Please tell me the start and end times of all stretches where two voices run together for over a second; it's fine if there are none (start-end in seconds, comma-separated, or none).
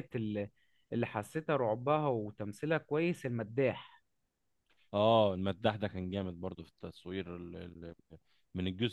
none